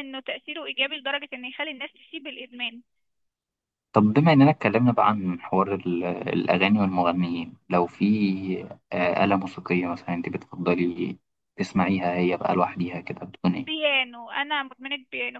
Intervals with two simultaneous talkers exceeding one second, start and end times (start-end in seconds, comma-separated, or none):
none